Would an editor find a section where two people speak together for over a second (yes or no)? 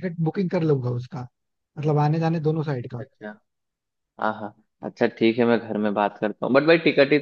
no